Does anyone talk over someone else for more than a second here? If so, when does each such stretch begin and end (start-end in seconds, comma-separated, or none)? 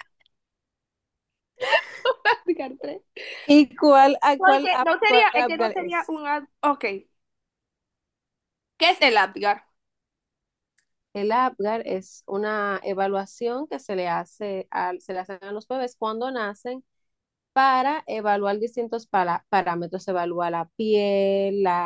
4.3-6.1